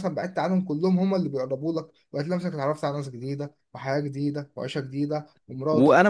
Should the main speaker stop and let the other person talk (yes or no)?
yes